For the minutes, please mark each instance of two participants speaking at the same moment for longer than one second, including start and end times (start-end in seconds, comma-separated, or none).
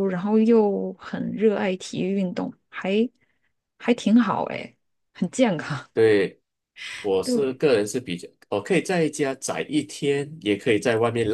none